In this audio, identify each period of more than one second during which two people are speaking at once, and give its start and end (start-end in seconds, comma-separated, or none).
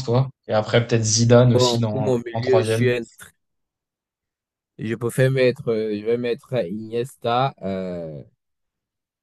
1.5-2.9